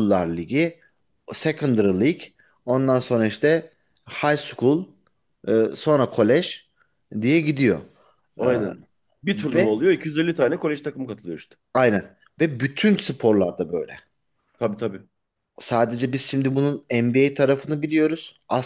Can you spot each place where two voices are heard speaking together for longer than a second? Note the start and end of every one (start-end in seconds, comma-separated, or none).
none